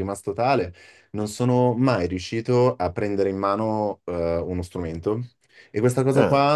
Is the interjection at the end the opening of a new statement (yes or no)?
no